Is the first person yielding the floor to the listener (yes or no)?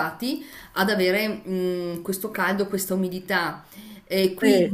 no